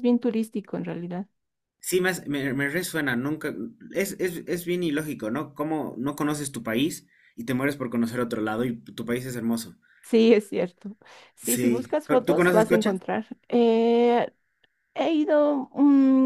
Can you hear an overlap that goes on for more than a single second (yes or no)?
yes